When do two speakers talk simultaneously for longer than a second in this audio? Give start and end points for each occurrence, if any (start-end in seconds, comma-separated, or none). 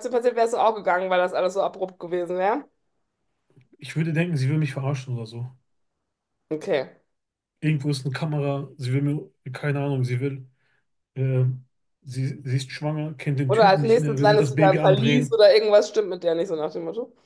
13.5-15.4